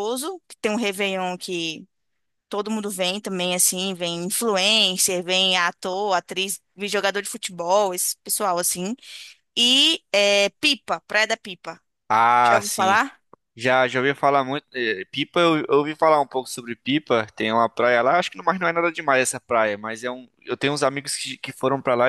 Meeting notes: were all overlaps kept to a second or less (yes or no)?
yes